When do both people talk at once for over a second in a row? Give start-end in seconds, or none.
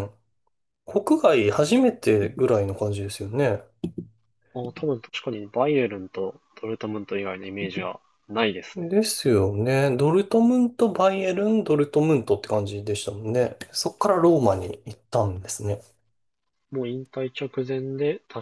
none